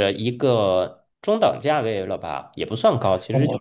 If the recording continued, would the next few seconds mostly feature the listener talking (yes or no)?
yes